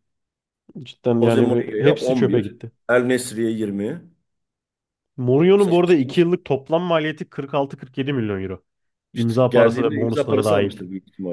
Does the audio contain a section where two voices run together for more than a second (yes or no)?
yes